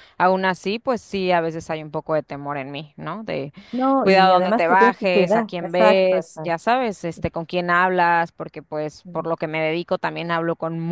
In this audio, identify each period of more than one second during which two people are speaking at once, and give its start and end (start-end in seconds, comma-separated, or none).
4.0-6.5